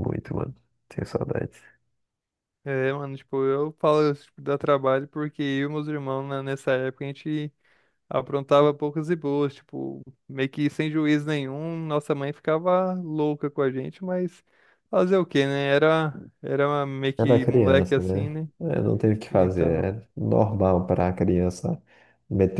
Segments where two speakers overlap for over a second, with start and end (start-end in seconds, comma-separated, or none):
17.2-18.5